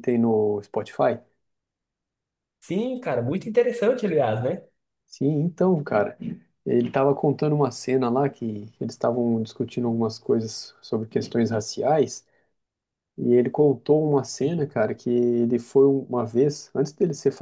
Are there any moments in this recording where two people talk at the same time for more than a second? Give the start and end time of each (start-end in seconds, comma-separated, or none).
none